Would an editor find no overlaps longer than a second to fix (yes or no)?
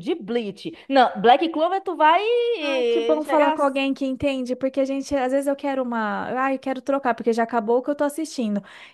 yes